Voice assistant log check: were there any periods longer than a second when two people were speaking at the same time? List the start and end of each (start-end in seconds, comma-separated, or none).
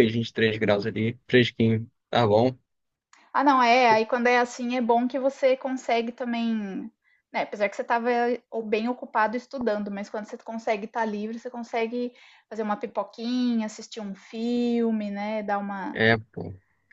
none